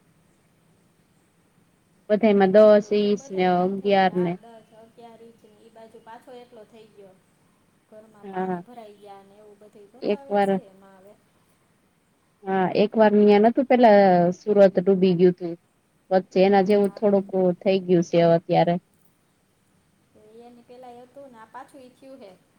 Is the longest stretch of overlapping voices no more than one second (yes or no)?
no